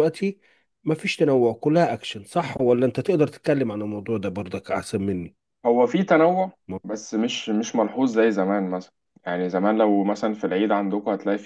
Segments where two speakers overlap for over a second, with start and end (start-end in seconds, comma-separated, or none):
none